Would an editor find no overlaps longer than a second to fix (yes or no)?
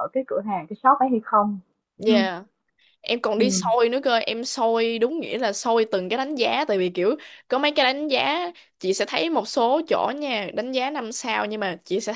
yes